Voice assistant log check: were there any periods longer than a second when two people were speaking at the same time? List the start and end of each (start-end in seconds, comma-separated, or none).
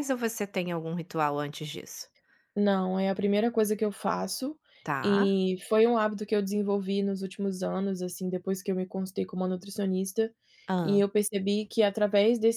none